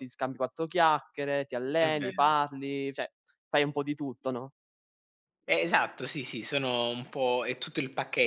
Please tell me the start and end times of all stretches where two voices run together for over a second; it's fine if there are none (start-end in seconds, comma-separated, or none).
none